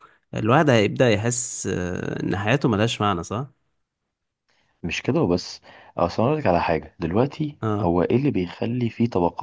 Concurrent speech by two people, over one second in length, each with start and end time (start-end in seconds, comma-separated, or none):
none